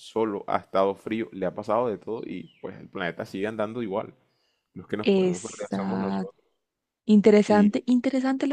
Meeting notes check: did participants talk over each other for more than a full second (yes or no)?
yes